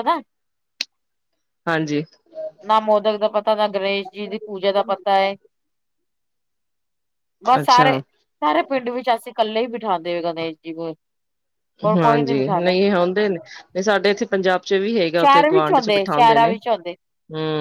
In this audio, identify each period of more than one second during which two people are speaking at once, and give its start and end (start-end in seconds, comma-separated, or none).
15.2-16.5